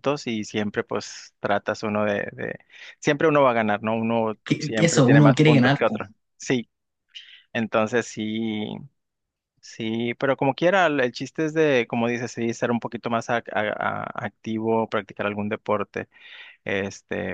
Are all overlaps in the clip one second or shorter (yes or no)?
no